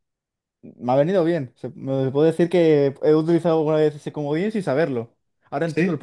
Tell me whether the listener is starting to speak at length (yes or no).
yes